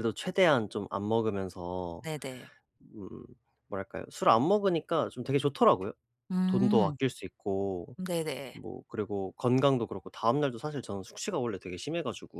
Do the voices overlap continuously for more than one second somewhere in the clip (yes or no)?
no